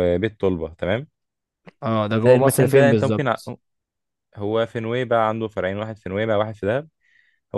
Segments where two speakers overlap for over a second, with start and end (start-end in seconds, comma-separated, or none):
2.2-3.4